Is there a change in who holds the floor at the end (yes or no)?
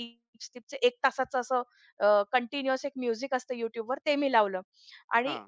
no